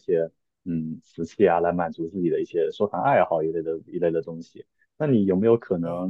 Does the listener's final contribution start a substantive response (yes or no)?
no